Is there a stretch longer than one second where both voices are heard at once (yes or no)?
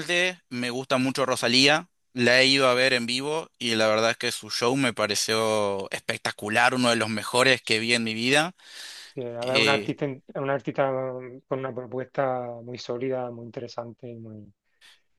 no